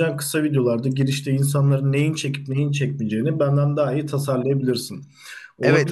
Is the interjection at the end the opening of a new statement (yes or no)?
yes